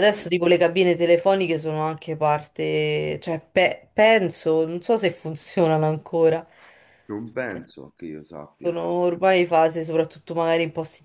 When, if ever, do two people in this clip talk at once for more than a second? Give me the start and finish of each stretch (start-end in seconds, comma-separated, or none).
none